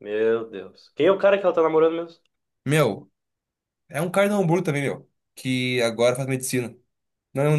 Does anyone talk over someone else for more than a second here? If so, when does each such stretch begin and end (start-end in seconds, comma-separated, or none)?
none